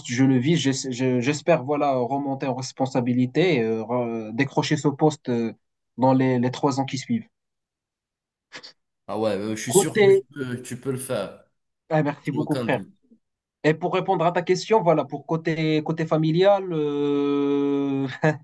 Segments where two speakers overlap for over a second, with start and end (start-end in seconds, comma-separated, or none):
none